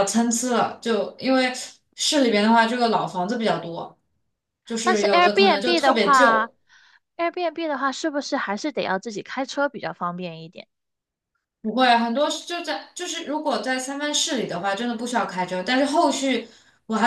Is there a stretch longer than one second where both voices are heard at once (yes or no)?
yes